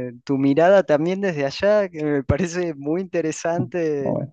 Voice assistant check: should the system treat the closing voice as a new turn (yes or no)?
no